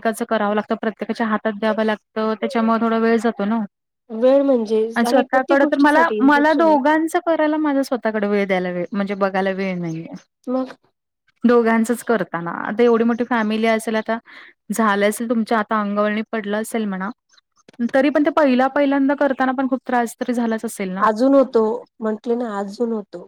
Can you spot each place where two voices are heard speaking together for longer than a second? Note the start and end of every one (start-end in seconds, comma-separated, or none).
5.0-6.8